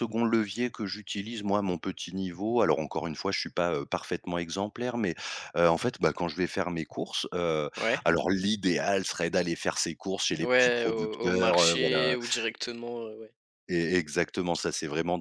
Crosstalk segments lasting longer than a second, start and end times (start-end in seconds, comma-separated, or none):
10.4-12.0